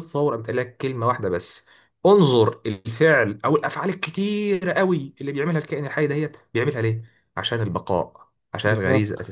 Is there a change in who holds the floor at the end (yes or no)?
no